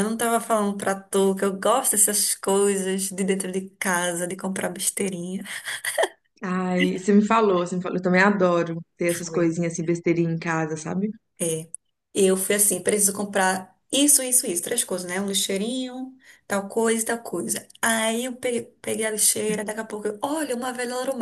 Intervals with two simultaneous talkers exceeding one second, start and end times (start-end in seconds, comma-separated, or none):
none